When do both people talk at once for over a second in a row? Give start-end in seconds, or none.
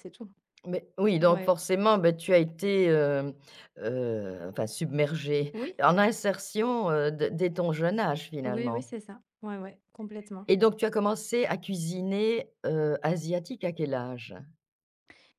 none